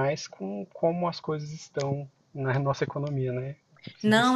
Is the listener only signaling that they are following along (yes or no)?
no